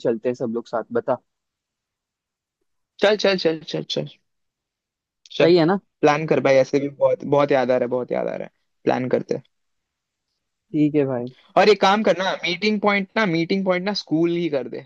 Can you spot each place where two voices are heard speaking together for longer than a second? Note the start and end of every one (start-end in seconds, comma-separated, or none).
none